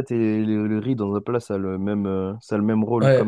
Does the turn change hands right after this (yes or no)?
yes